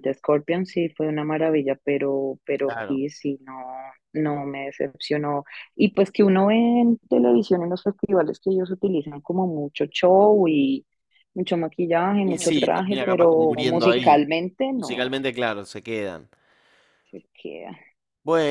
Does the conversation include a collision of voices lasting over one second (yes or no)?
yes